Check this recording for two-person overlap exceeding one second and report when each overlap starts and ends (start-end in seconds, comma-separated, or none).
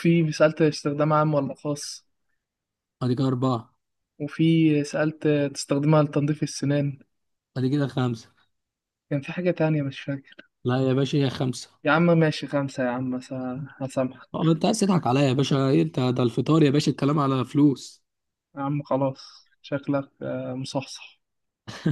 none